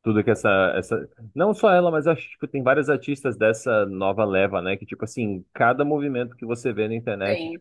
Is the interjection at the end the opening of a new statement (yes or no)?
no